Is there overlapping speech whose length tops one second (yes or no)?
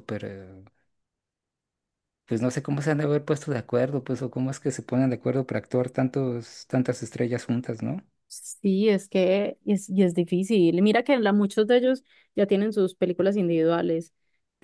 no